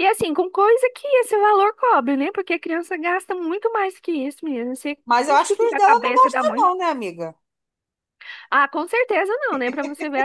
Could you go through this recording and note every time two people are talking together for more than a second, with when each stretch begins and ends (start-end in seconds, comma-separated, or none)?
5.0-6.7